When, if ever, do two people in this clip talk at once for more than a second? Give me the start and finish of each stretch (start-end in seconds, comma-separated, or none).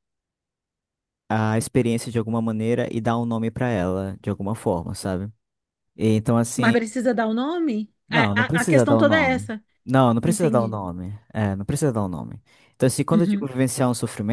8.1-9.5